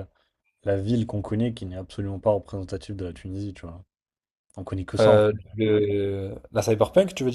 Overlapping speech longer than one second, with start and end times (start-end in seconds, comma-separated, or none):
none